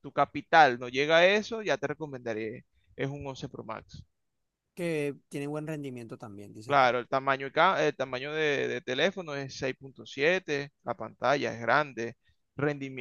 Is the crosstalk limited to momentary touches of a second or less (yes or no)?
yes